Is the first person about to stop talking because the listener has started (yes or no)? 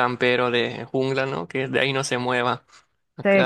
yes